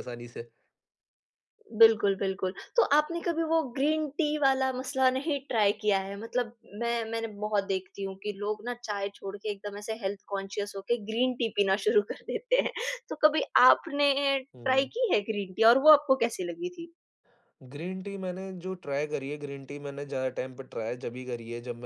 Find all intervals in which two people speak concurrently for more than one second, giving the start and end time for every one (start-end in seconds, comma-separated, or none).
none